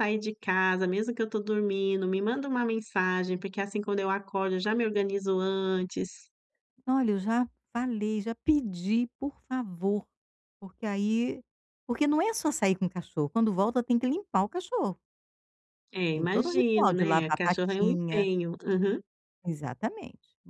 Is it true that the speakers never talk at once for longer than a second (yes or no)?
no